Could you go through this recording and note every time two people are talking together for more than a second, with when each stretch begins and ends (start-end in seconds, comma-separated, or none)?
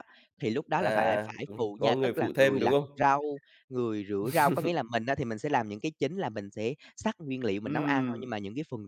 0.8-3.0